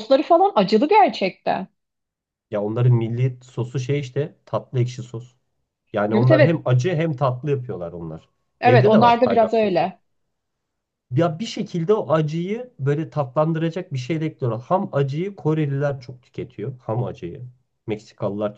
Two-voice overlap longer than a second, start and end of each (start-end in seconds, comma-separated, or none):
8.6-9.9